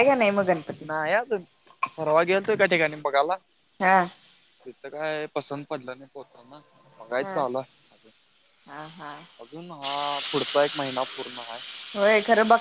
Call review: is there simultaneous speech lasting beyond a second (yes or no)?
no